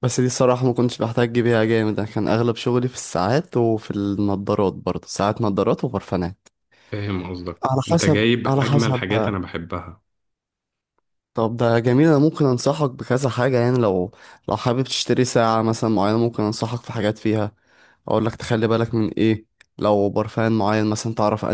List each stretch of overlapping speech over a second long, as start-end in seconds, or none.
7.7-9.4